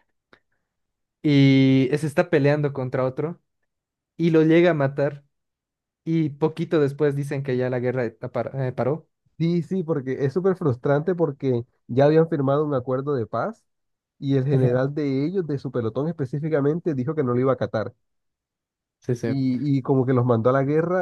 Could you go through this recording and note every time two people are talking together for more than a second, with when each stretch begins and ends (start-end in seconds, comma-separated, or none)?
none